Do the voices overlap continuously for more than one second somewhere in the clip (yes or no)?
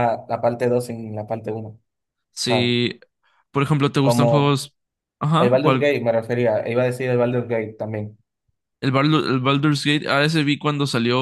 no